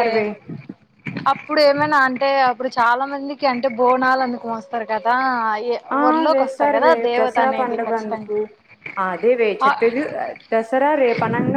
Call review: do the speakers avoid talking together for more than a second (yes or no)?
no